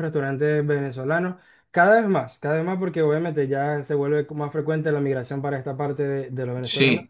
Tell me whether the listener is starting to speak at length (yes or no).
yes